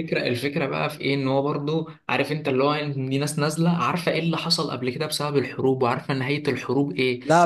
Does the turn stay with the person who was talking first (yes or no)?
yes